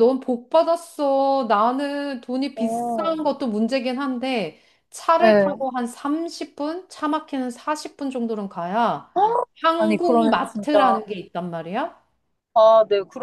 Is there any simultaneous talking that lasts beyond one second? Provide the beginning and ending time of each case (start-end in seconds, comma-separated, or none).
9.8-11.0